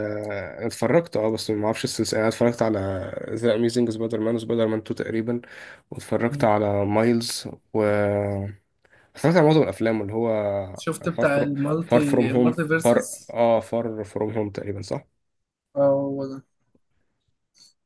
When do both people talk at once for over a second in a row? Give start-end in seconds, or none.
11.1-13.4